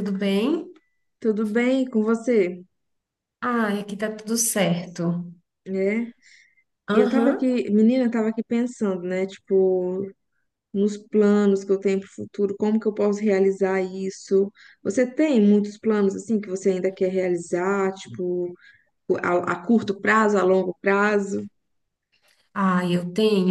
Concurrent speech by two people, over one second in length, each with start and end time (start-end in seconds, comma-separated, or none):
none